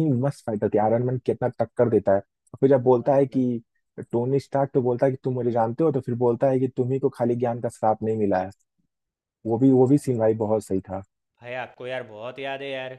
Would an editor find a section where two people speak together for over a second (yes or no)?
no